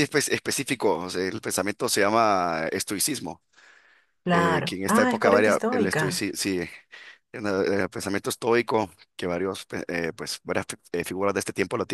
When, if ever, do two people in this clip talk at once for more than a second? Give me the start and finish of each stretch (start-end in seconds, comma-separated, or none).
4.3-6.2